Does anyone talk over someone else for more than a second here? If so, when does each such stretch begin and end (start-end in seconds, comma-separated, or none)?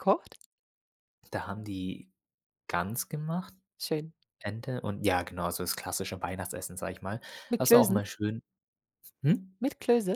none